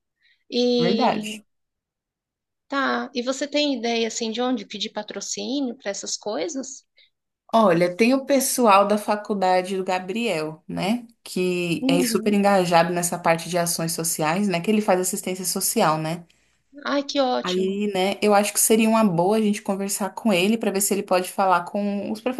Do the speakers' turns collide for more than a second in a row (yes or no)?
no